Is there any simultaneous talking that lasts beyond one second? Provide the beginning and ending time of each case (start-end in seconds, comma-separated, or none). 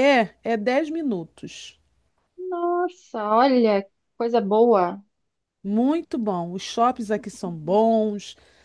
none